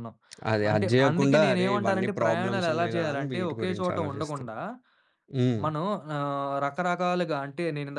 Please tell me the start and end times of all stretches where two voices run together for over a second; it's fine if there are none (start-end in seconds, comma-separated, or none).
0.7-4.5